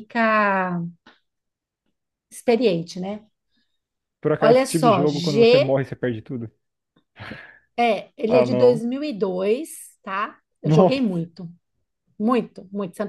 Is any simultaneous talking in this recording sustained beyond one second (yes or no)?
yes